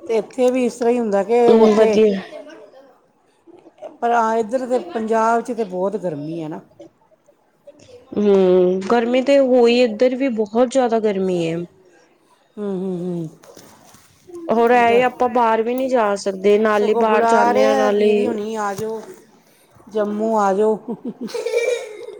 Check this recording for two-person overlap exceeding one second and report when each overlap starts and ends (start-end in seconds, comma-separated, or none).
16.7-18.3